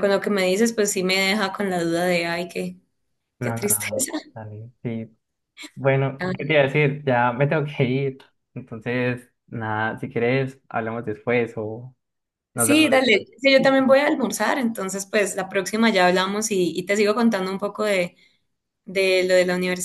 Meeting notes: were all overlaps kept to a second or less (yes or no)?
no